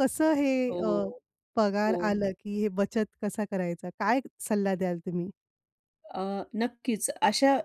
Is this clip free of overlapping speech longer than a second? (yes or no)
yes